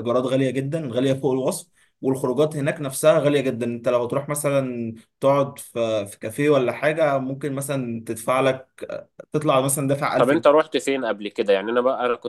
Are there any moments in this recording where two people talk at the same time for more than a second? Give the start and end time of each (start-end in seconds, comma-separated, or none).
none